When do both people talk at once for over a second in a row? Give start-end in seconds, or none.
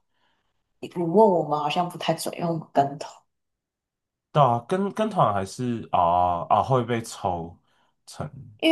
none